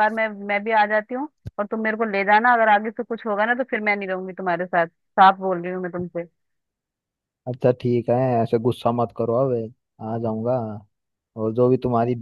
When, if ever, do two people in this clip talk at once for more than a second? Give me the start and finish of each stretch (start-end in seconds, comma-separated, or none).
none